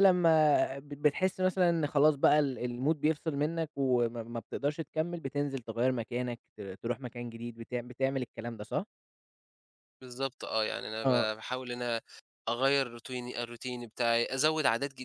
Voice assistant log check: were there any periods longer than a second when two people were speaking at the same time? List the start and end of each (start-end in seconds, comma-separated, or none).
none